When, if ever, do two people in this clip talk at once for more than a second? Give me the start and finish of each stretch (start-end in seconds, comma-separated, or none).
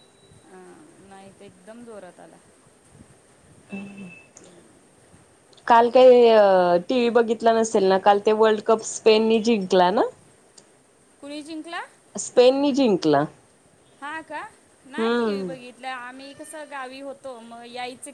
none